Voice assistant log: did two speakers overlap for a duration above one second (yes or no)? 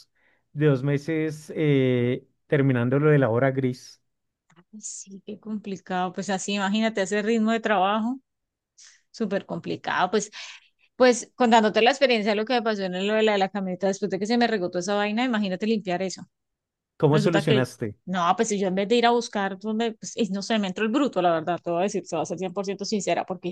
no